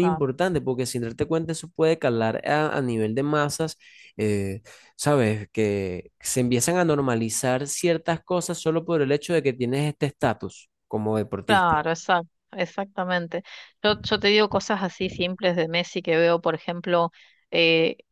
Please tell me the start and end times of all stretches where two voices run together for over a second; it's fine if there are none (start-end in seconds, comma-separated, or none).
none